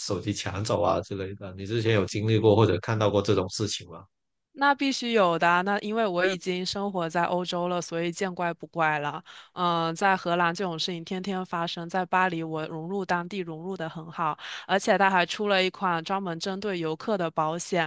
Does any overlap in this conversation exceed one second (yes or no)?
no